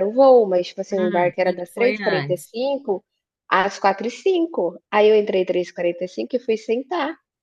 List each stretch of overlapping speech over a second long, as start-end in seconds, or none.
0.9-2.5